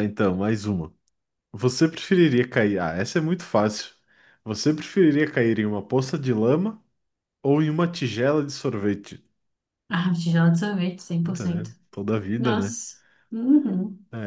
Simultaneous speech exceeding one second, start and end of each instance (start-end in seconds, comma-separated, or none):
none